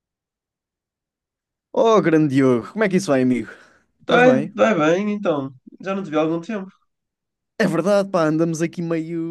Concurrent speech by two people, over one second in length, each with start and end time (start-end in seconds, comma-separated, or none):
none